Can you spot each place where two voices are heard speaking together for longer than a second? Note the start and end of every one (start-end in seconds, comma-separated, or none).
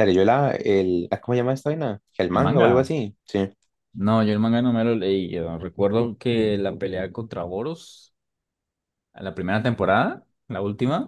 none